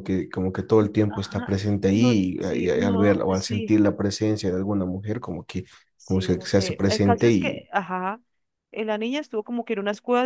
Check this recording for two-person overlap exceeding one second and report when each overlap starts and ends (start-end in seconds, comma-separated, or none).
1.1-3.8, 6.0-7.7